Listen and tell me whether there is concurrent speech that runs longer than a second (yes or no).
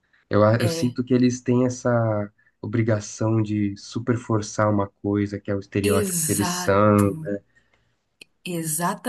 yes